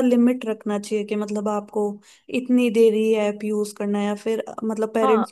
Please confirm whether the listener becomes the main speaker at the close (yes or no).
yes